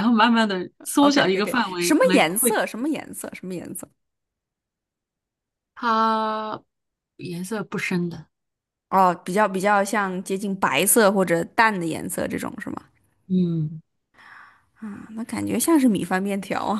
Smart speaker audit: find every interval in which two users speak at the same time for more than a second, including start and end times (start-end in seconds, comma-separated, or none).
1.0-2.6